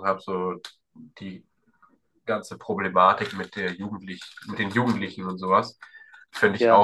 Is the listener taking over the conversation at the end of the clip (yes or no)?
no